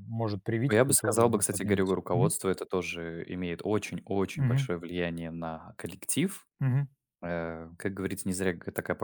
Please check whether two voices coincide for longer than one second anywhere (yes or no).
yes